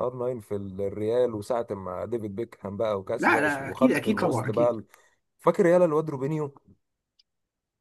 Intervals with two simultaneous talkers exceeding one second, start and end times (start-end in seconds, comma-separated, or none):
3.2-4.8